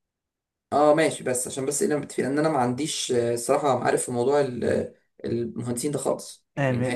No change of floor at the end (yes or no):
no